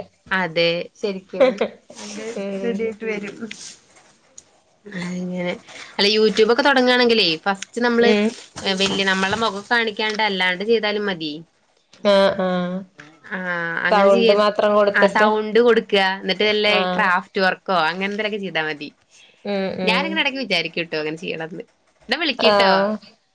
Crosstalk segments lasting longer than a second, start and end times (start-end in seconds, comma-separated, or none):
none